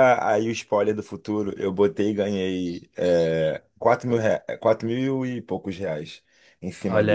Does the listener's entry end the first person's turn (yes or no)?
yes